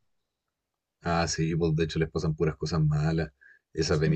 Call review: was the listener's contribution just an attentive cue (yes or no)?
yes